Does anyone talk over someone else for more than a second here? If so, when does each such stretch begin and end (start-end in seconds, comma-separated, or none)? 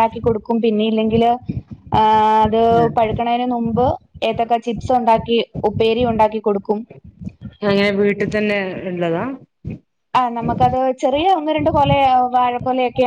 none